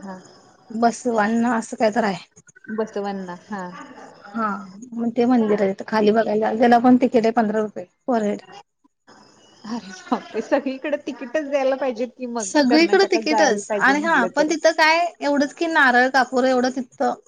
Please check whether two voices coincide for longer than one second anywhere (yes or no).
yes